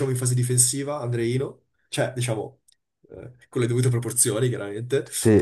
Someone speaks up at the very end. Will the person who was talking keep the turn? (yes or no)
yes